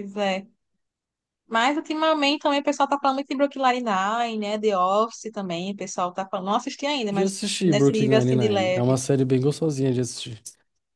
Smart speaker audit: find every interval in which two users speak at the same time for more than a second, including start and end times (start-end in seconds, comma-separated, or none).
7.1-9.0